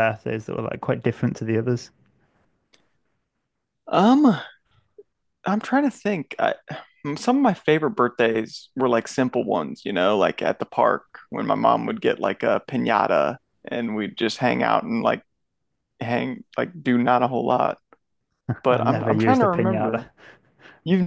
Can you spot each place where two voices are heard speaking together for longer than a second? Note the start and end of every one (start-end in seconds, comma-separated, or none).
18.7-20.1